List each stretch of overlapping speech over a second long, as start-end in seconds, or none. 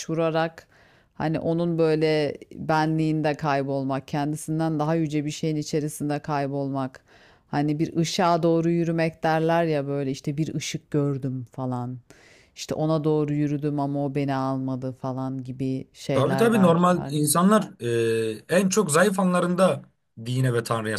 16.1-17.4